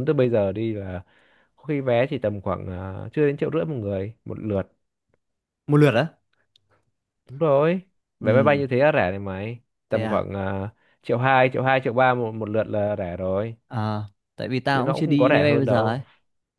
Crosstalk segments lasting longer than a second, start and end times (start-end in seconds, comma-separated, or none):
14.7-16.0